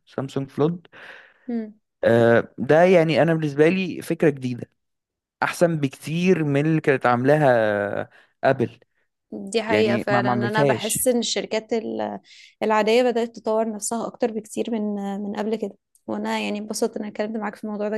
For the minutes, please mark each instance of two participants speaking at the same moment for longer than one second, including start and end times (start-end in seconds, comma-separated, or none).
9.7-11.1